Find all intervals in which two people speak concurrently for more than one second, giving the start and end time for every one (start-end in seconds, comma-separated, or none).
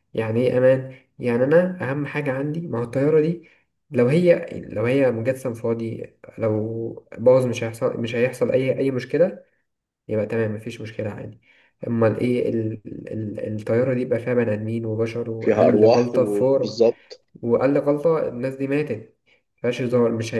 15.4-16.8